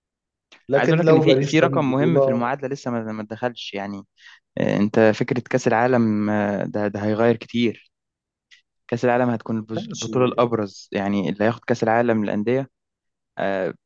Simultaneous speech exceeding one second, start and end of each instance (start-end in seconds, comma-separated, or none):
0.8-2.5